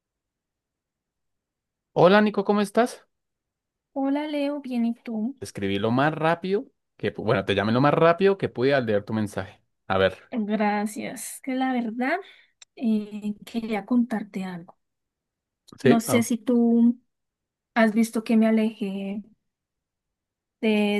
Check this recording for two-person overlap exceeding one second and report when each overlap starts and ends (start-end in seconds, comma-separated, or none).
none